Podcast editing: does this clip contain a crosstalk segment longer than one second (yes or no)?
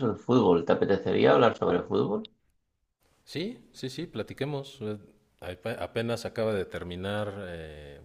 no